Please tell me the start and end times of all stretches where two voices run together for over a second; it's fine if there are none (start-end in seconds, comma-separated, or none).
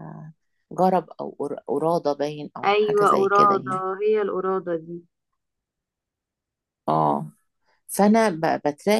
2.6-3.8